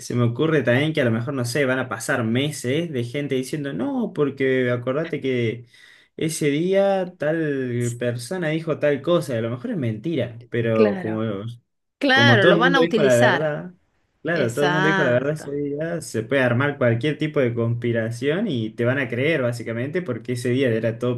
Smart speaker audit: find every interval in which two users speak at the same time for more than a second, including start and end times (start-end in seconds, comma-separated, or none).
12.1-13.6, 14.3-15.5